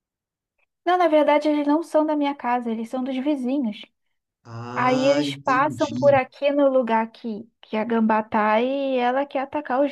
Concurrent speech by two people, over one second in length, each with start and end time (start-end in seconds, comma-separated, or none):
4.7-6.2